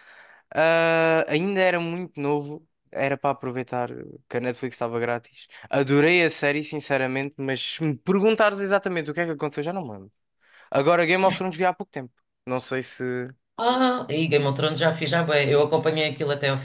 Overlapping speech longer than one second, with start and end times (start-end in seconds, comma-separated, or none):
none